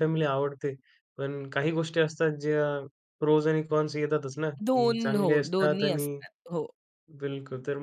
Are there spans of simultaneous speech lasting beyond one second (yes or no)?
yes